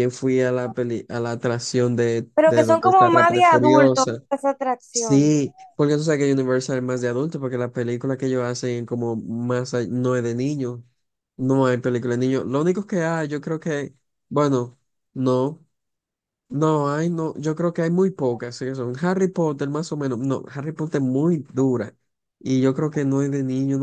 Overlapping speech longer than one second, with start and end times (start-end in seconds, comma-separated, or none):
2.4-4.2